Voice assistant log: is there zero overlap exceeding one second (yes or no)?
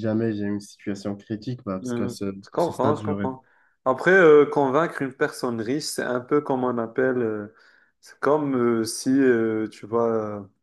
no